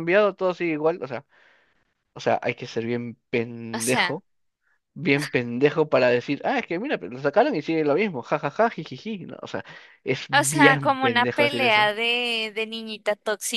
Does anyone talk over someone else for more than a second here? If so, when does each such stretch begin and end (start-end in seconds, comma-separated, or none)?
10.3-11.9